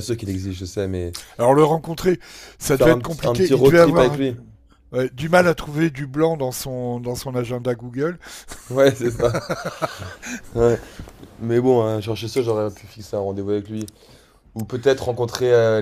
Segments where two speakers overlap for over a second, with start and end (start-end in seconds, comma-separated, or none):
2.7-4.1